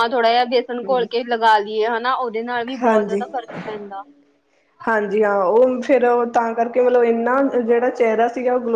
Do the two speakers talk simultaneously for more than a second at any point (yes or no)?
no